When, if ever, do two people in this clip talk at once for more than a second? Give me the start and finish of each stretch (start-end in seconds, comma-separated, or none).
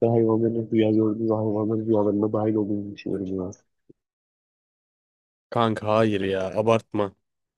none